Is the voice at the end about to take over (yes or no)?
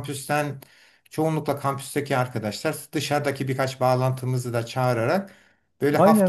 yes